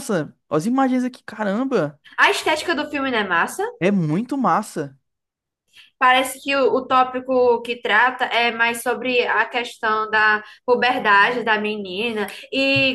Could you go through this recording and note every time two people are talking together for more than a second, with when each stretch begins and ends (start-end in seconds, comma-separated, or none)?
none